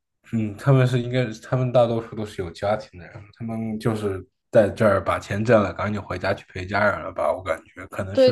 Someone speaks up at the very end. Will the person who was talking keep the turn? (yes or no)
no